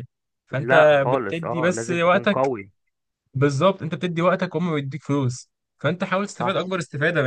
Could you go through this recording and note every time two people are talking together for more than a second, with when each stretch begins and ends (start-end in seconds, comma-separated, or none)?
0.5-2.5